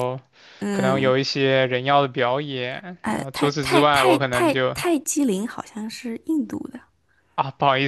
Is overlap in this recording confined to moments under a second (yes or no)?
no